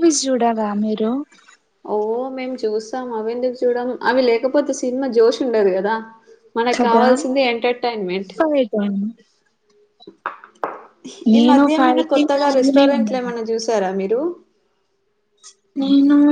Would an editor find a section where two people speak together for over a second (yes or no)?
yes